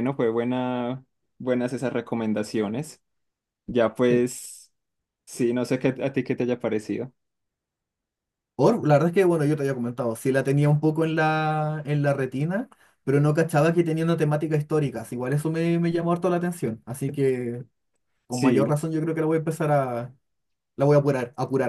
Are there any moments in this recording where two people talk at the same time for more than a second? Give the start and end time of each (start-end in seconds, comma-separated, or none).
none